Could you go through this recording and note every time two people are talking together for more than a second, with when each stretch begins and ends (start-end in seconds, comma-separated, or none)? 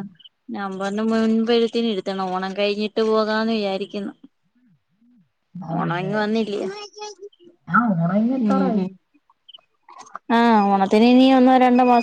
none